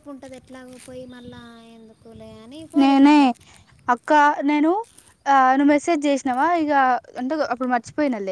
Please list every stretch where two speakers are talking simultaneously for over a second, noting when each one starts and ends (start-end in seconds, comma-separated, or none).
none